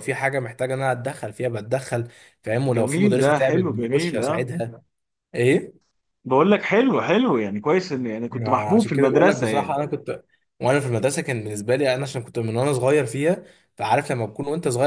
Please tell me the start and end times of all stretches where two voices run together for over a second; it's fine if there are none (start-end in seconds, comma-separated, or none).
2.7-4.5, 8.3-9.8